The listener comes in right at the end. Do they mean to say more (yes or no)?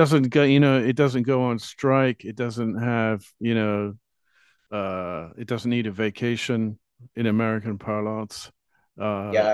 yes